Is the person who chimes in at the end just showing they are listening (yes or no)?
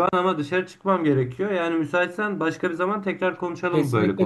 no